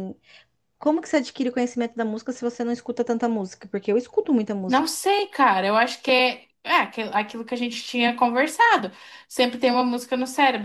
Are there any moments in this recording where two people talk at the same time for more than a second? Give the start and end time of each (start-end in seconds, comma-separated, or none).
none